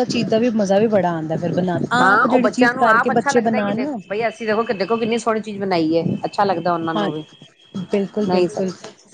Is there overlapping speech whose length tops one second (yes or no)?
yes